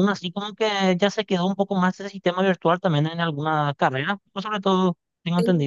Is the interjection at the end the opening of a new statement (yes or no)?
yes